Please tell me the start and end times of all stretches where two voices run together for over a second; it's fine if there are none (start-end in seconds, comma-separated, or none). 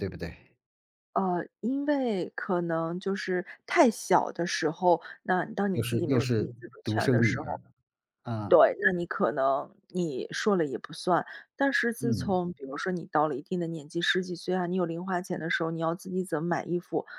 5.7-7.6